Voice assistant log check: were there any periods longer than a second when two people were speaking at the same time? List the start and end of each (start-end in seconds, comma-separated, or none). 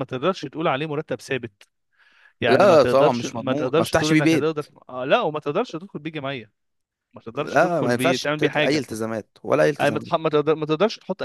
2.5-4.5, 7.3-8.8